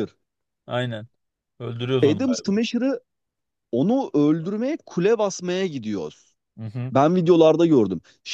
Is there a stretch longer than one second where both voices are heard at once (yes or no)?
no